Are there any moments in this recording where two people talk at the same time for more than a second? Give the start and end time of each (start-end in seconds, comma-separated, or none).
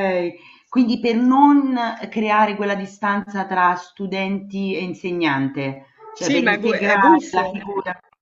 6.2-7.7